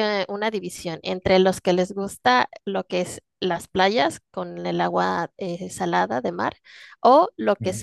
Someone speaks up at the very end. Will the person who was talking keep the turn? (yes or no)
yes